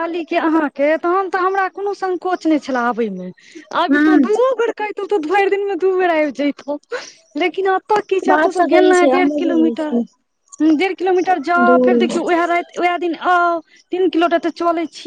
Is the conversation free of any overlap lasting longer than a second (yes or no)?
no